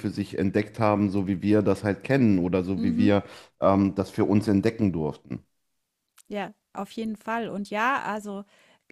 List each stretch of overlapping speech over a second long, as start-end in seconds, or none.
none